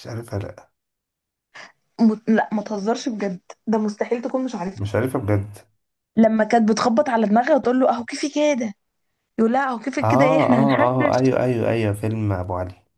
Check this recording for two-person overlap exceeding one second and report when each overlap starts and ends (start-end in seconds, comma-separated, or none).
10.0-11.3